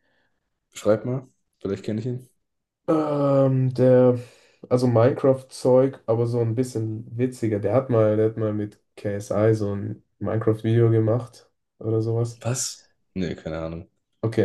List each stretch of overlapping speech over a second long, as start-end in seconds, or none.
none